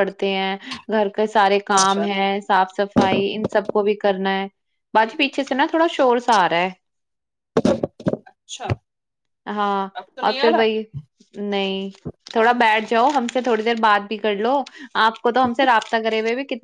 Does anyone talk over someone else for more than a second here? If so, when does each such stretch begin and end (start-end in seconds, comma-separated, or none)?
none